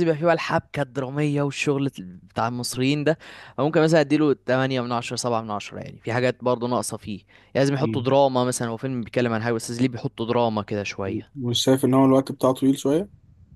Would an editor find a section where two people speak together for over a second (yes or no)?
no